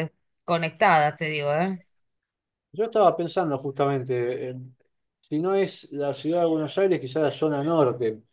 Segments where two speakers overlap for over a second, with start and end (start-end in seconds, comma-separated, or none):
none